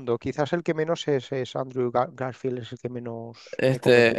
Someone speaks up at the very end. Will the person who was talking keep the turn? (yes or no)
no